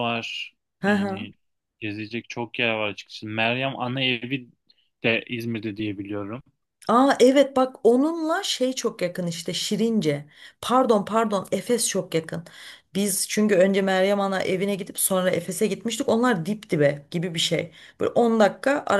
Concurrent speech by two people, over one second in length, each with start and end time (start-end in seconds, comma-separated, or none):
none